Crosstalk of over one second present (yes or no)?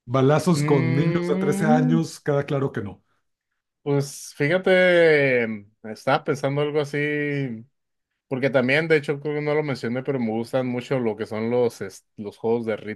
yes